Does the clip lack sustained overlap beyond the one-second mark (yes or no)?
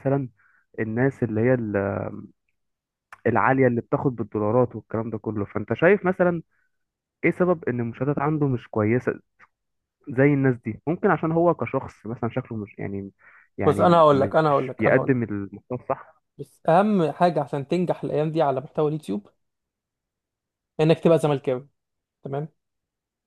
no